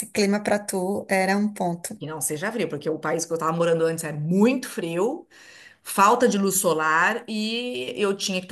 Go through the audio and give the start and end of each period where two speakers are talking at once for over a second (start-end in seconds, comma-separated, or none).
none